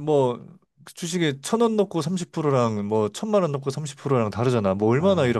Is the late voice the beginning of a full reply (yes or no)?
yes